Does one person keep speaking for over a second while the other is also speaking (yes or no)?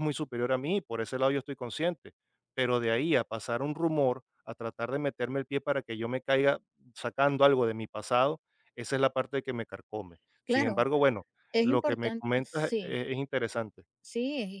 yes